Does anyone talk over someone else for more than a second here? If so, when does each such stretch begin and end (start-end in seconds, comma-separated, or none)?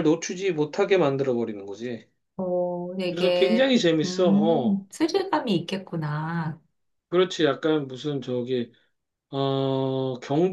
3.1-4.9